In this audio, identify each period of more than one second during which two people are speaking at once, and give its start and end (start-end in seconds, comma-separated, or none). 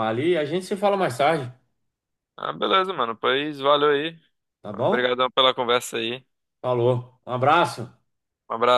none